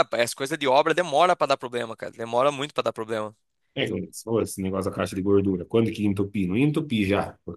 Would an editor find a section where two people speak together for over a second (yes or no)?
no